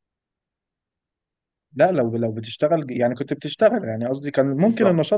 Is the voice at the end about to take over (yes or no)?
no